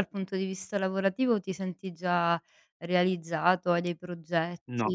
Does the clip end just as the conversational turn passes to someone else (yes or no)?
yes